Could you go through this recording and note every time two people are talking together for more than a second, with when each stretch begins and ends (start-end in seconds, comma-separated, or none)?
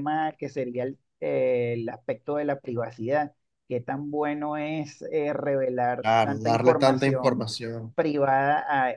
6.0-7.5